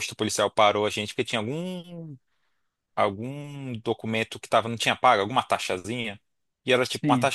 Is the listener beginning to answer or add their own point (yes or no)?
no